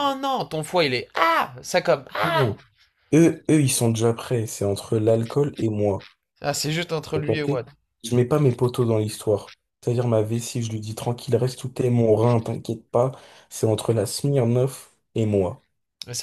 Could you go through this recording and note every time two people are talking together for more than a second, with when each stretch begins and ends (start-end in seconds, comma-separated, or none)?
none